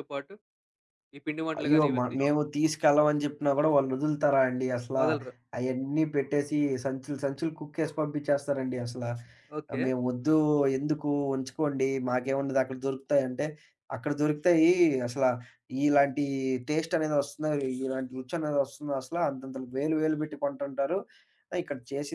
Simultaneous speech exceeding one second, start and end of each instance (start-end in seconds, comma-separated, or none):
none